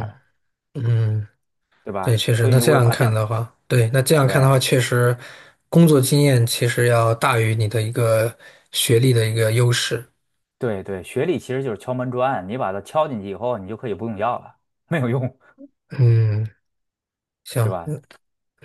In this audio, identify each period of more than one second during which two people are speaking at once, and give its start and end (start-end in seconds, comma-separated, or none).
2.0-3.2